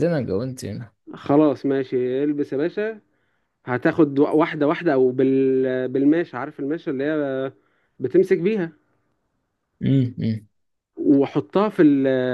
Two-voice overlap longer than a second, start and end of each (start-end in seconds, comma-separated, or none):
none